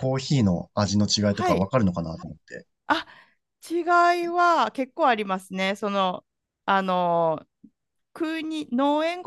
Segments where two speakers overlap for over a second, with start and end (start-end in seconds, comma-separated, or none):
none